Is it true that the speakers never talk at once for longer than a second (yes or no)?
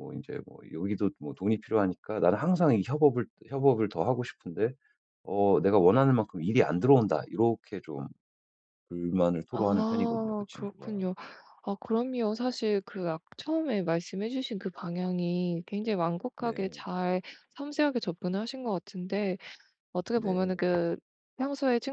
no